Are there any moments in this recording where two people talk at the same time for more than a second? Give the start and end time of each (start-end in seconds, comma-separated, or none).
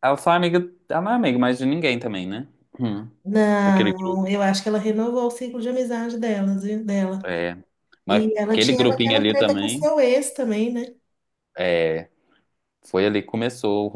8.1-9.9